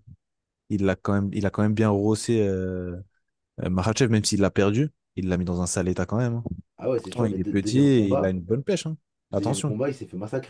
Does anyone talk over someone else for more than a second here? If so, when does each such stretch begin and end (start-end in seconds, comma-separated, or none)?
7.0-8.3